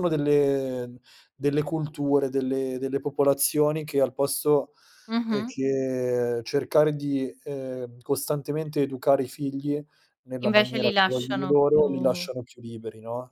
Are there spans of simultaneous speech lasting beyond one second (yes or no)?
yes